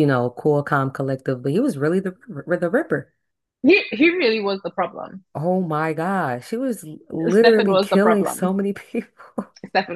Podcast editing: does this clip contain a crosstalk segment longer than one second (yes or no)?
yes